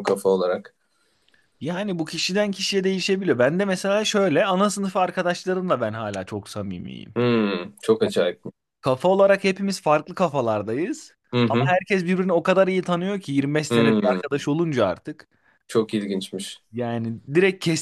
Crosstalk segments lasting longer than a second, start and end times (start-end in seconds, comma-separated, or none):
none